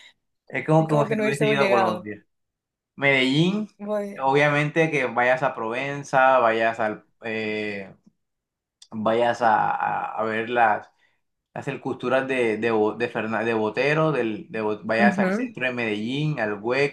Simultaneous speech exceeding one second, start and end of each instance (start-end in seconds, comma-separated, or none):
0.8-2.1